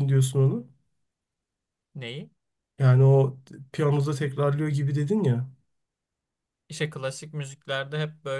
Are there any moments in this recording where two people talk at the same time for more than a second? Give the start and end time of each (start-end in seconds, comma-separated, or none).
none